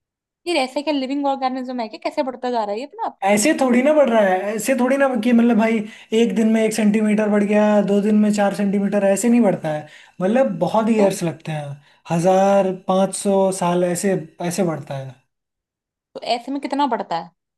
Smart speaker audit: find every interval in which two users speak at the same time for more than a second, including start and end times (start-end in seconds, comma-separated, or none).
none